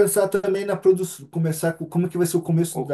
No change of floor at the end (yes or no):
no